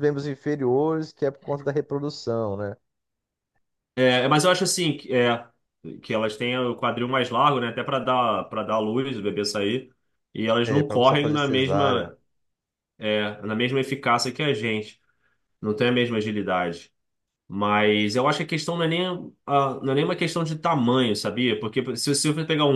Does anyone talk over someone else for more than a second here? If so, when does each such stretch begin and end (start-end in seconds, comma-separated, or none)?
10.6-12.2